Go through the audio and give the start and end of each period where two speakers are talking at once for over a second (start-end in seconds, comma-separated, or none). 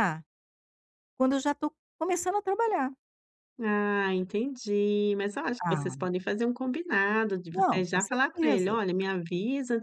7.5-8.8